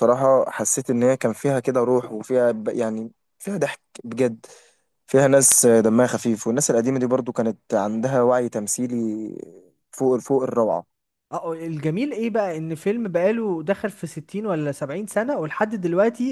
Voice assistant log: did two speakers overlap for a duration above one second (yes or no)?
no